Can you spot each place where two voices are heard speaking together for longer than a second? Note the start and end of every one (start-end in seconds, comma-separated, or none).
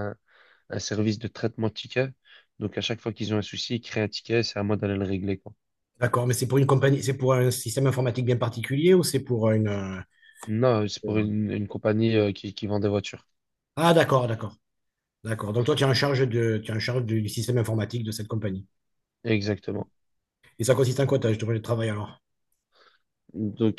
none